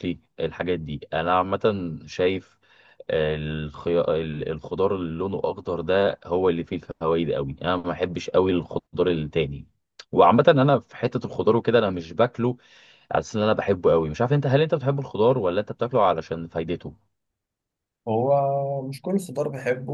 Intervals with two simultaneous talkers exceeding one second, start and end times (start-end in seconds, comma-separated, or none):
none